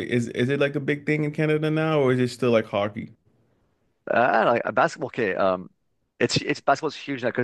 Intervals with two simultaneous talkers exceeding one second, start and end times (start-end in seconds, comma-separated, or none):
none